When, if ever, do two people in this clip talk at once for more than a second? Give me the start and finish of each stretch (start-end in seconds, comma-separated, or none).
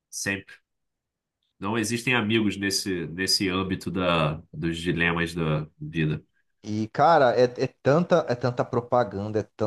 none